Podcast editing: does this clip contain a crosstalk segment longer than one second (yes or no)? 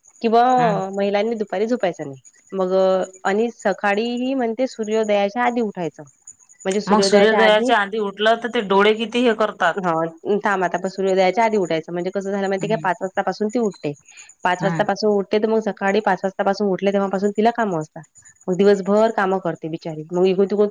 no